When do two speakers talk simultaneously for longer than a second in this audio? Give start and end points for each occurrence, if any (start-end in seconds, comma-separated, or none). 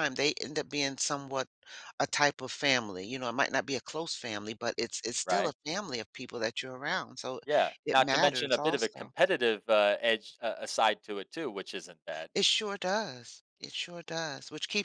7.8-9.1